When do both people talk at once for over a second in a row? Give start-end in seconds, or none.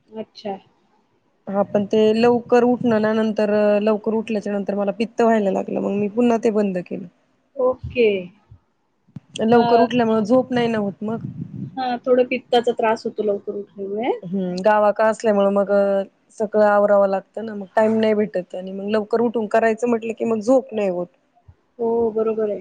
none